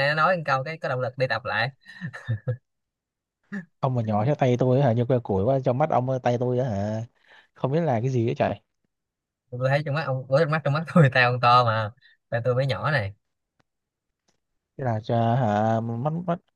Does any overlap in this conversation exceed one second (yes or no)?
no